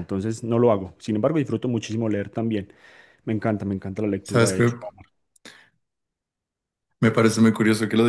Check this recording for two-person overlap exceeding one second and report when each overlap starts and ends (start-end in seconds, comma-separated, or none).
none